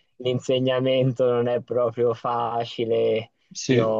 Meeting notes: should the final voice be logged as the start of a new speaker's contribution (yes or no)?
no